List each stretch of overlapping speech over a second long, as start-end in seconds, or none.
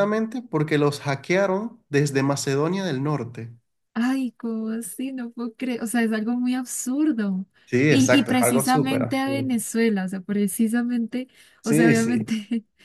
7.9-9.5